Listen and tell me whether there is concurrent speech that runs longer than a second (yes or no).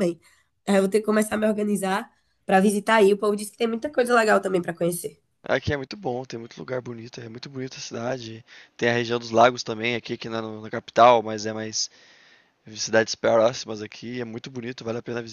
no